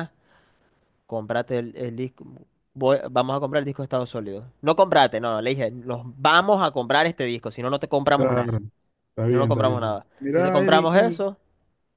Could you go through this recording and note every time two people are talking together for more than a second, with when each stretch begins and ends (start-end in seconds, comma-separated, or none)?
9.3-11.3